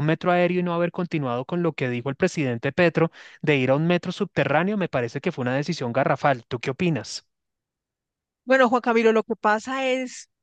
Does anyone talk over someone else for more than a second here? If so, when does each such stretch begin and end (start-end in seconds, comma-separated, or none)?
none